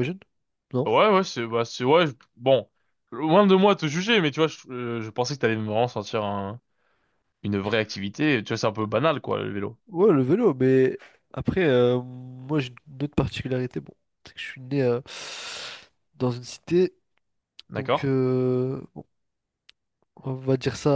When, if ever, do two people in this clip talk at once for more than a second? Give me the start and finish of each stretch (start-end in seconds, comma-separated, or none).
none